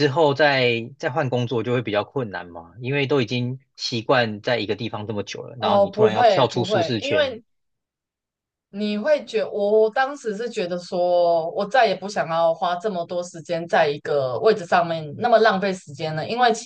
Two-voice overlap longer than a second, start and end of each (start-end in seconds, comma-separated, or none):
5.6-7.3